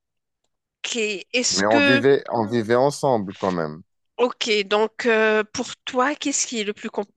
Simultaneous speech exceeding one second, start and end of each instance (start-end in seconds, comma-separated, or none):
none